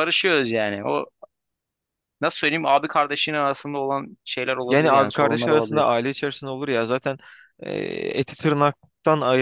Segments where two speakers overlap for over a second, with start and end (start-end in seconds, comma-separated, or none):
4.7-5.9